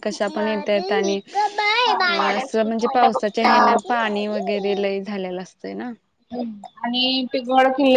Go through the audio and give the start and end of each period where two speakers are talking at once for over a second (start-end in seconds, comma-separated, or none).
2.4-3.8